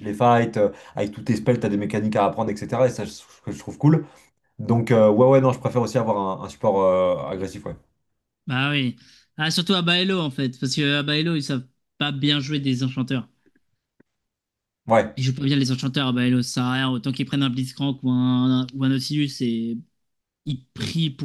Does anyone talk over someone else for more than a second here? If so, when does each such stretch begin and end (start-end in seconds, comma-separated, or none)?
none